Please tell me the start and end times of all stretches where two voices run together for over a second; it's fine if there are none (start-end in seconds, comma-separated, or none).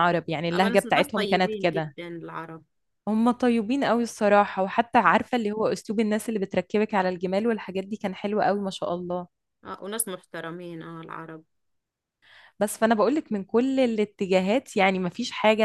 0.5-2.0